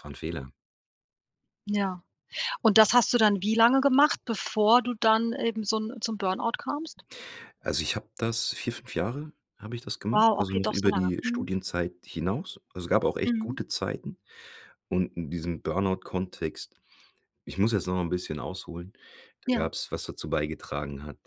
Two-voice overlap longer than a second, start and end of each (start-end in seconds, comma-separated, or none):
10.1-11.5